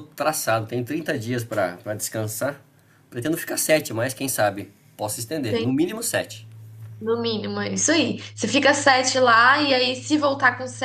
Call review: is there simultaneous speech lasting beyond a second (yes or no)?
no